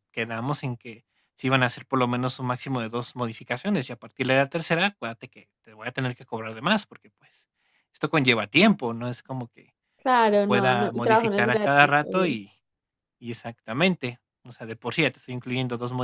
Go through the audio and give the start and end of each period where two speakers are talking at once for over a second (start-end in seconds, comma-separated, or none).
10.3-12.4